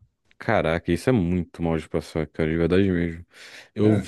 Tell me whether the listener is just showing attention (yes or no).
yes